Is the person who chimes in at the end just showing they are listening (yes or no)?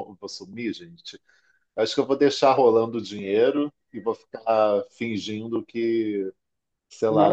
yes